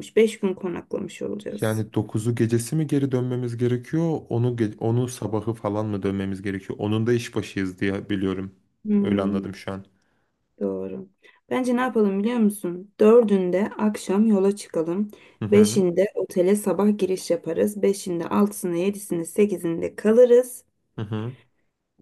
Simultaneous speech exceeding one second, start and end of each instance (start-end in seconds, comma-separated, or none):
none